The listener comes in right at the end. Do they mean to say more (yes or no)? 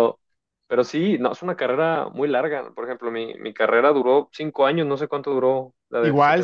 yes